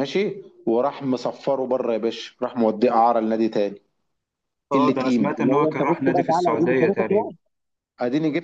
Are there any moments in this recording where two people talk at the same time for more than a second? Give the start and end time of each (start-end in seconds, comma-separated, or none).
4.7-7.3